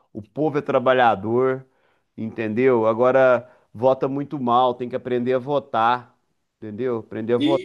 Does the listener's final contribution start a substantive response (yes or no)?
yes